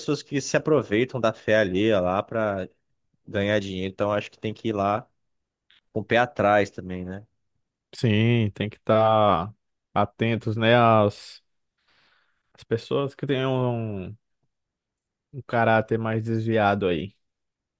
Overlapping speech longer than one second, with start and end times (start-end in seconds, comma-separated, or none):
none